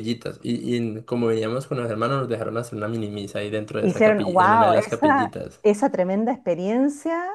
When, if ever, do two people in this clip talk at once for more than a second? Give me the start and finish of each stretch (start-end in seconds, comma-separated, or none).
3.8-5.6